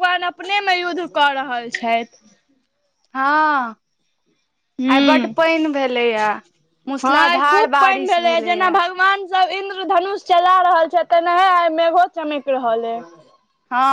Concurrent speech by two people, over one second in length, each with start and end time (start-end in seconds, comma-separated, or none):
7.0-8.8